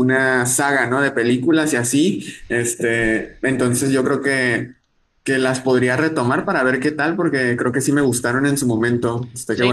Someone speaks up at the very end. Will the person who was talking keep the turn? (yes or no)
no